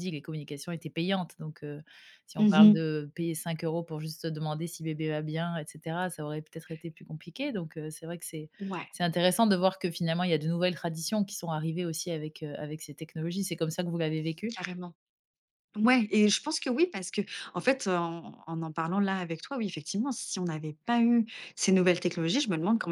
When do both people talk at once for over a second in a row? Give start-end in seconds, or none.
none